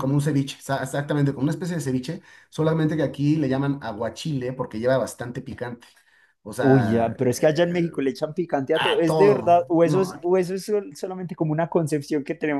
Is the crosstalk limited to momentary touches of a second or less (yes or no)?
no